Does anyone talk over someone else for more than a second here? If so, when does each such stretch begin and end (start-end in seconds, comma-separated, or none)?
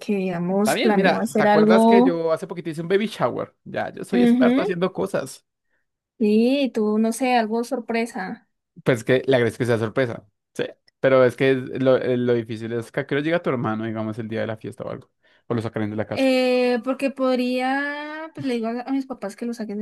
0.6-2.2